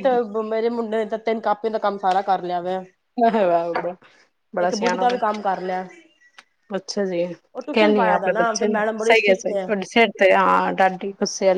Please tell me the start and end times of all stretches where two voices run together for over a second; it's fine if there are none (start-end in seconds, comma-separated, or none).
7.7-9.5